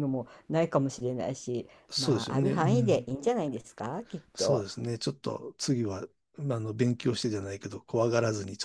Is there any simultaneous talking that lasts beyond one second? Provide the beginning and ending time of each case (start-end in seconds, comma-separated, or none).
1.9-3.1